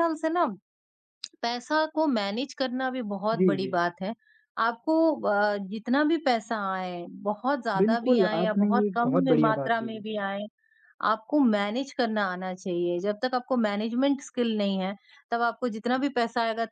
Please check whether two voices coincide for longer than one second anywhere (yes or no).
yes